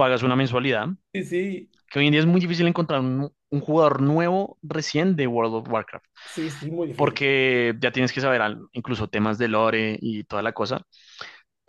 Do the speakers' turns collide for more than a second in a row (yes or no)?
no